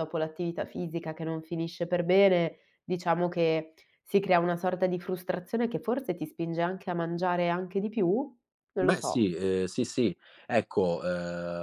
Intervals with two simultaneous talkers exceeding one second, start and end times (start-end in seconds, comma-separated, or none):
none